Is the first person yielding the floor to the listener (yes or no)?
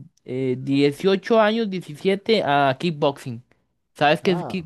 yes